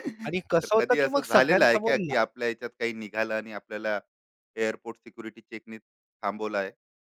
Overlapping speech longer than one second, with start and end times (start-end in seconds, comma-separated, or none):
0.6-2.2